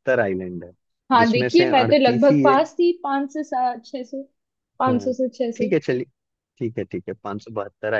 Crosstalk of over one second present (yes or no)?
yes